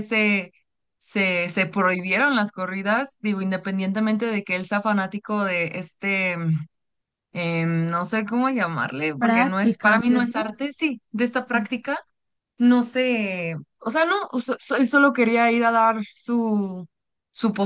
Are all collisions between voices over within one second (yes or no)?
no